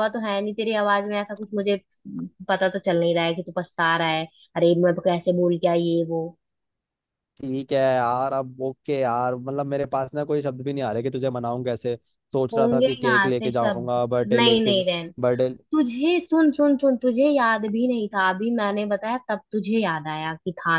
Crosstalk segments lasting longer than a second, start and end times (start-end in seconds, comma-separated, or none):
12.5-14.7